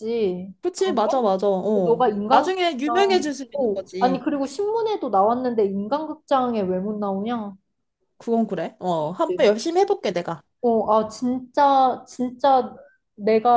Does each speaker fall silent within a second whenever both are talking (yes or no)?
no